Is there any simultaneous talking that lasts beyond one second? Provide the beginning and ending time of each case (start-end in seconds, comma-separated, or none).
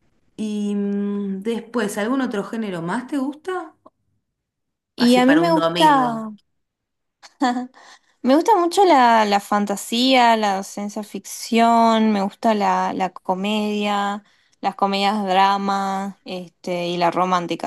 5.0-6.3